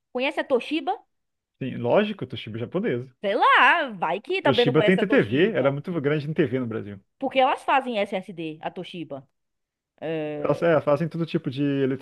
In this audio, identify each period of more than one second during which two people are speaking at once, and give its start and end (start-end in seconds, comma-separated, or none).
4.4-5.7